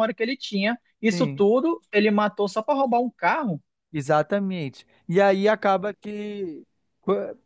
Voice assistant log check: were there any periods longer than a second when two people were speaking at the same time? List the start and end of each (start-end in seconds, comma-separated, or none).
none